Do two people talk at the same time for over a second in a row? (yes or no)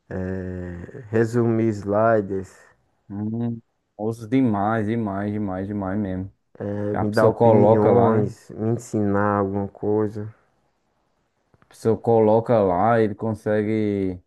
yes